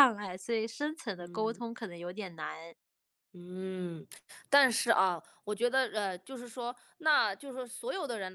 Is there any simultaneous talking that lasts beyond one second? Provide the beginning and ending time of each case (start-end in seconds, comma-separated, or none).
none